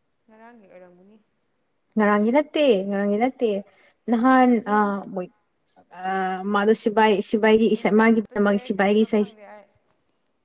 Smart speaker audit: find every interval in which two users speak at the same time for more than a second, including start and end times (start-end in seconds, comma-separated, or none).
7.7-9.2